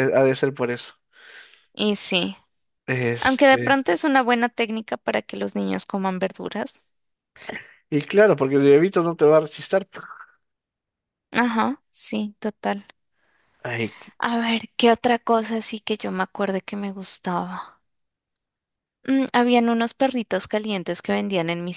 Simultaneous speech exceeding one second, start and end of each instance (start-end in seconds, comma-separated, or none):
none